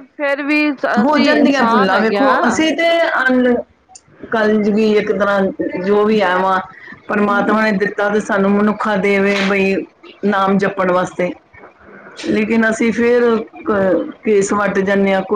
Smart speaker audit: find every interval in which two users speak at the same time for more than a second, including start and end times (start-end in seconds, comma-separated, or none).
1.1-2.6